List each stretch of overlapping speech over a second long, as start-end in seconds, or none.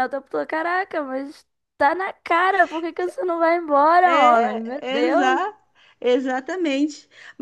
4.0-5.5